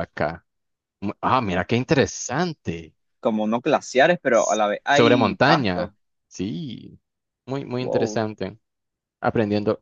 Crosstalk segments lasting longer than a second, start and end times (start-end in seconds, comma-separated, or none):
4.3-5.9